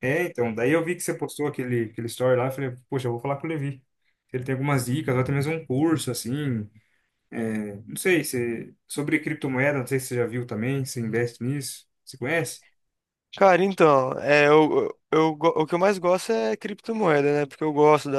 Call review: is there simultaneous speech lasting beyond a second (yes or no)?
no